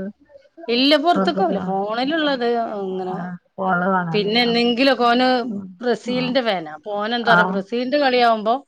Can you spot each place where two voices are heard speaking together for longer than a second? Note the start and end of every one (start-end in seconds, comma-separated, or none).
none